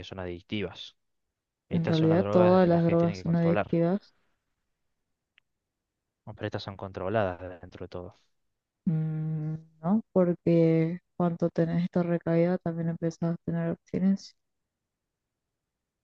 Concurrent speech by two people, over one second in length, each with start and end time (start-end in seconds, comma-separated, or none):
1.7-3.8